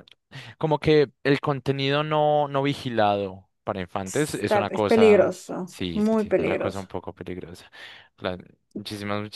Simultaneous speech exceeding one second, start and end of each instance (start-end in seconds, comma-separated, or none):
4.0-6.9